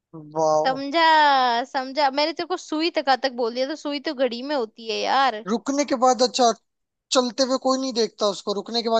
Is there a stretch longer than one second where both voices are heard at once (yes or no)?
no